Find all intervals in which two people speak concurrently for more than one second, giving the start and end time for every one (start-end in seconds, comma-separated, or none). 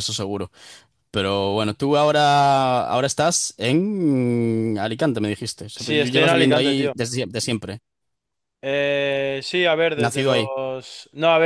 5.8-7.0